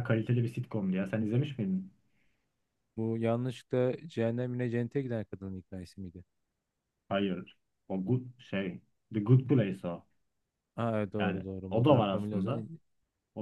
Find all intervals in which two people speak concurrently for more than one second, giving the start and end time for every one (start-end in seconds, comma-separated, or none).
11.2-12.7